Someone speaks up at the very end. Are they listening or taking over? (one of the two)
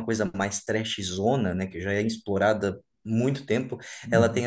listening